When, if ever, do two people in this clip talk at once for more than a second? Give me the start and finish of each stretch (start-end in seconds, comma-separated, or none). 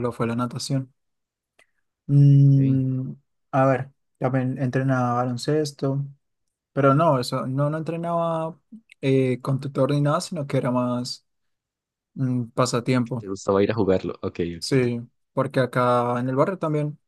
none